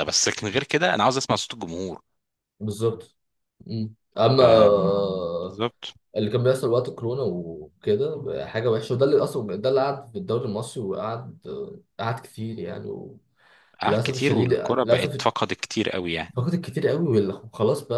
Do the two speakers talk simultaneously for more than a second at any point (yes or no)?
yes